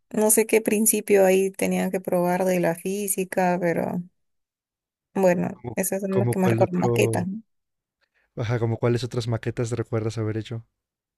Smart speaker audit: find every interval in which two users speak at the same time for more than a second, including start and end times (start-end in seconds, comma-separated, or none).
5.5-7.2